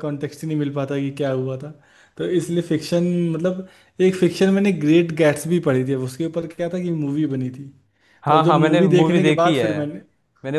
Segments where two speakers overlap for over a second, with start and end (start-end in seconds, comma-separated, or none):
8.3-9.7